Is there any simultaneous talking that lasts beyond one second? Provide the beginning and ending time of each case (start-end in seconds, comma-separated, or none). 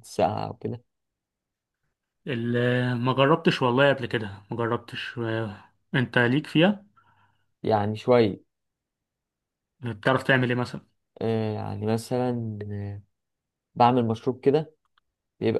none